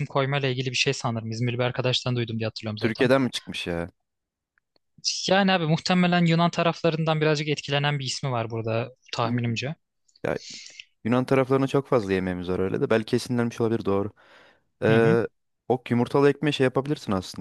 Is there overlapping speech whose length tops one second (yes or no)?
no